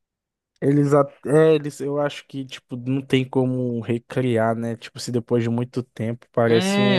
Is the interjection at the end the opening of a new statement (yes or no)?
yes